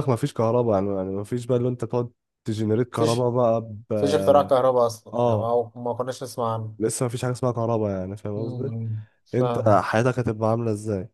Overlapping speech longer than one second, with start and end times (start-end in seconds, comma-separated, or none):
none